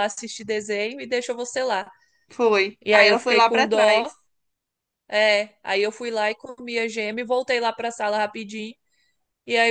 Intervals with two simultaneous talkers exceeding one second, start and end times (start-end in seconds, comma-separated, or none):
2.8-4.1